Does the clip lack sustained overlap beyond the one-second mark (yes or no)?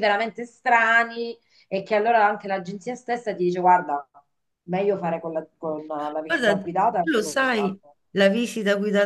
no